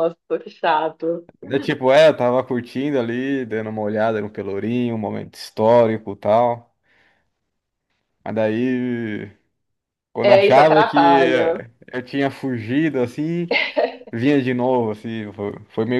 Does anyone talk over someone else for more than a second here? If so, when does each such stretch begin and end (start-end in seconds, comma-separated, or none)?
10.2-11.6